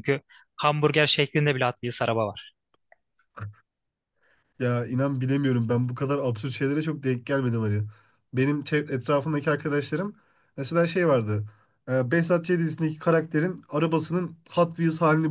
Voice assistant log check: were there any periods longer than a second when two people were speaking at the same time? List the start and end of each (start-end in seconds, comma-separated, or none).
none